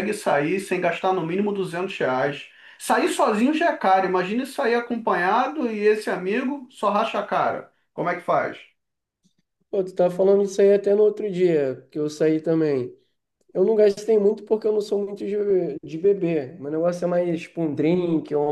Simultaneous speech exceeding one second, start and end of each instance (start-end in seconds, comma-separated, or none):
none